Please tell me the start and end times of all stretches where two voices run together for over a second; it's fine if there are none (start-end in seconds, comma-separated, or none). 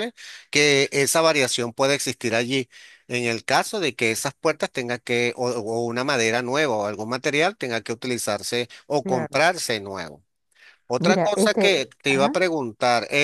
11.0-12.4